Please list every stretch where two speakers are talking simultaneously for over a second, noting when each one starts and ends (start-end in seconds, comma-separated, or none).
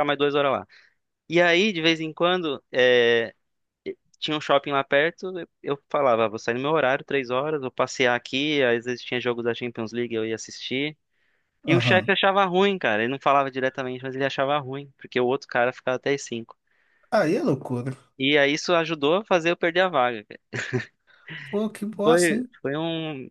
none